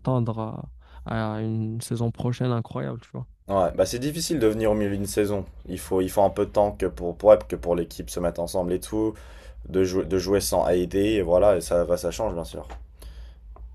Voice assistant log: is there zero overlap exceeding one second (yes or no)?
yes